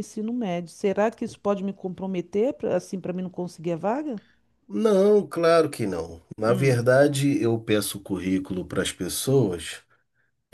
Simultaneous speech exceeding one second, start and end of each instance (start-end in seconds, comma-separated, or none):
none